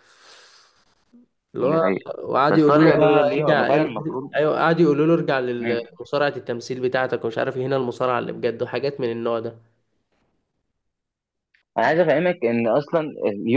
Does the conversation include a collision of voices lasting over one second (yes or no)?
yes